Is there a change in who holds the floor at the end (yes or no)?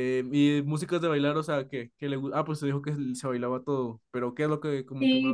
yes